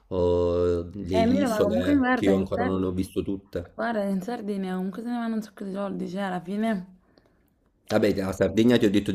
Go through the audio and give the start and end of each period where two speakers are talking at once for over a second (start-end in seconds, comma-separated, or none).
1.1-2.8